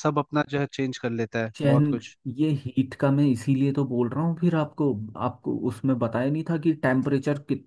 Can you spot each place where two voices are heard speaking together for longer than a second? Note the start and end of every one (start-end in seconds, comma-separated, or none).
none